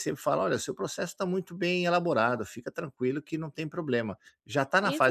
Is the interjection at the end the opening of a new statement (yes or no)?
yes